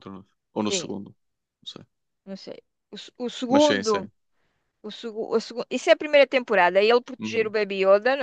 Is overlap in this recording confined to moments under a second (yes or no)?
yes